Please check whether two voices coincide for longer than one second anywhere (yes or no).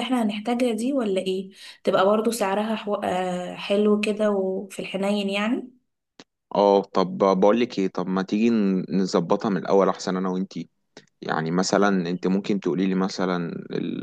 no